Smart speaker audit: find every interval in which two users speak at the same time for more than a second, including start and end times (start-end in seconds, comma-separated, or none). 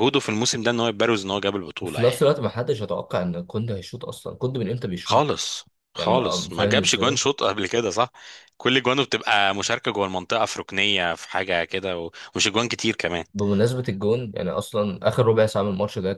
6.0-7.2